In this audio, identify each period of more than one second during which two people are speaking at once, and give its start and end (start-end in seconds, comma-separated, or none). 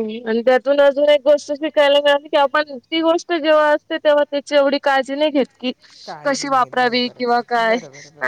6.2-7.8